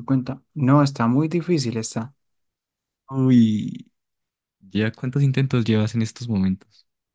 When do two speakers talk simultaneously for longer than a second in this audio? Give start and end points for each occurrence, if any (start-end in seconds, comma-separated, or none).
none